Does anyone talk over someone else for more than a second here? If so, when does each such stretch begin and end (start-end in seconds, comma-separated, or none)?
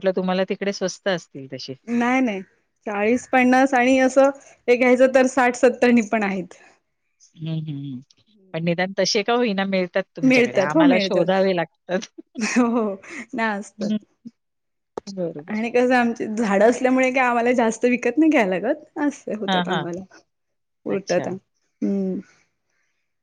10.3-11.5